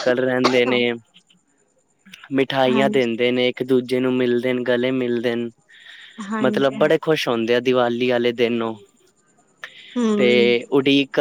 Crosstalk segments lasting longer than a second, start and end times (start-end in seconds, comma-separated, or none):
none